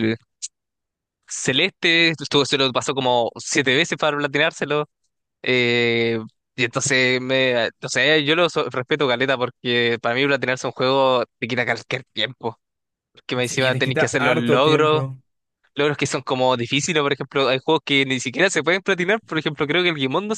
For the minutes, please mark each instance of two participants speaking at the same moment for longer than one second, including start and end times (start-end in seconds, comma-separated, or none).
13.4-15.0